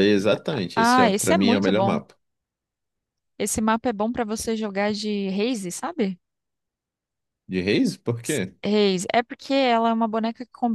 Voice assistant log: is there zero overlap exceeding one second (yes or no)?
no